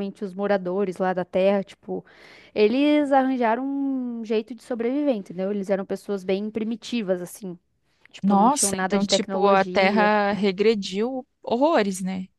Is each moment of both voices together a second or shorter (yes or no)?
no